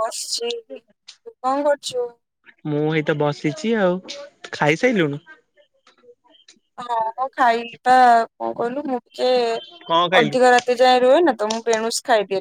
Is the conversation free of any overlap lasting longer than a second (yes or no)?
yes